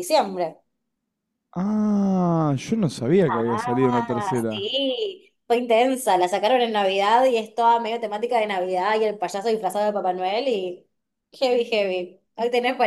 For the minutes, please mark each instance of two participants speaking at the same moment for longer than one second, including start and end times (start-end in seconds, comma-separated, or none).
3.3-4.7